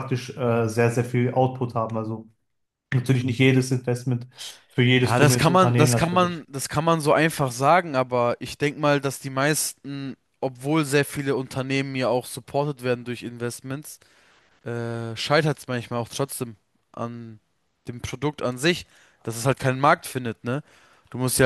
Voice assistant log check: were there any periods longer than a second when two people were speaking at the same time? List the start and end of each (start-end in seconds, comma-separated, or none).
5.0-6.4